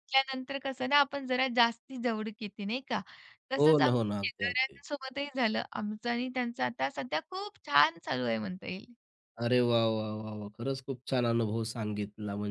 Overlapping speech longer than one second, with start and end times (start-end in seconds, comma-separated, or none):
3.6-4.8